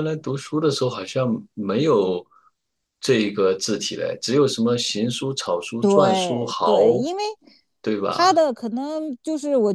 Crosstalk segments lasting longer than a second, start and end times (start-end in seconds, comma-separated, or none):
5.8-7.0